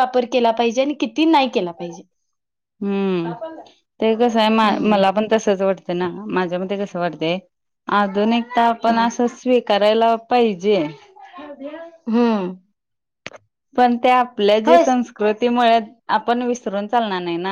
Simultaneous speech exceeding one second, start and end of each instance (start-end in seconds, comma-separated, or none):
none